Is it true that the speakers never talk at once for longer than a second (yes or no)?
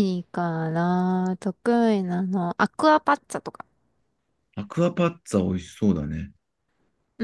yes